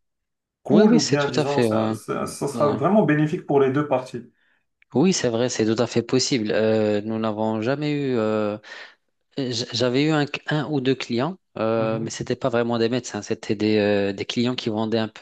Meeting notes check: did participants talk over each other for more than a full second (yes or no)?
yes